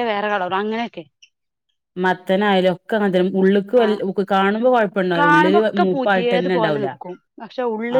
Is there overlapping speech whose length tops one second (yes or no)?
yes